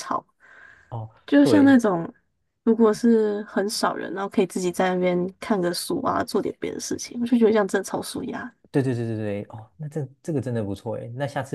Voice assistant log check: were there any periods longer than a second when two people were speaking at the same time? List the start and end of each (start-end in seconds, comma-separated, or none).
none